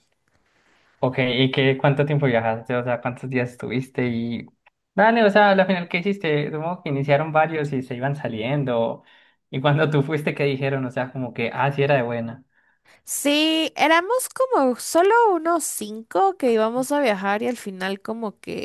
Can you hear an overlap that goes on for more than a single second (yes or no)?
no